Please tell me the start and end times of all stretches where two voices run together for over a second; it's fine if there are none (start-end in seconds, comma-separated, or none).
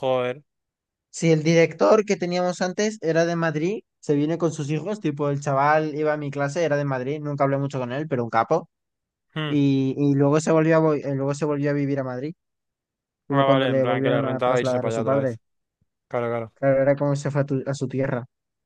13.3-15.4